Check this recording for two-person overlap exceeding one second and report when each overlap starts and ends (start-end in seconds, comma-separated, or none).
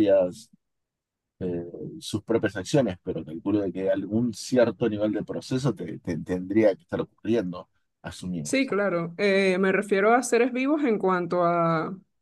none